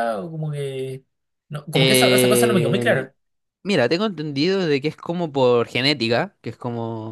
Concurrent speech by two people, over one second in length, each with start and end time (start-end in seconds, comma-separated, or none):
1.7-3.1